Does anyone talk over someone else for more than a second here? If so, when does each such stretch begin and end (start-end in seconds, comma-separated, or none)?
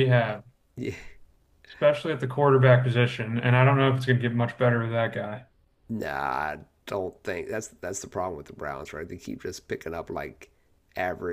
none